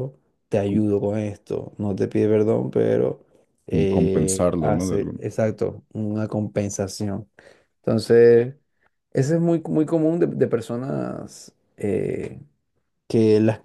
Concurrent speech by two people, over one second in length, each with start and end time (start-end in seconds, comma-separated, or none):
3.7-5.2